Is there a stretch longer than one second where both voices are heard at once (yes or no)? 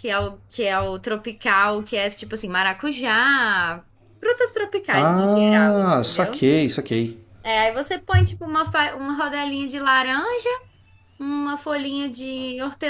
yes